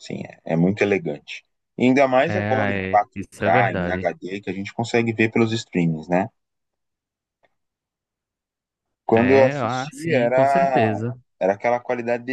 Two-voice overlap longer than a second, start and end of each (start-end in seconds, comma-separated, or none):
2.2-4.1, 9.1-11.0